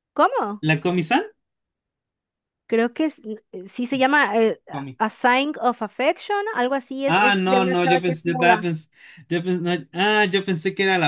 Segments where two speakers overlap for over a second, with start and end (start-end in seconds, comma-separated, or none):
7.1-8.6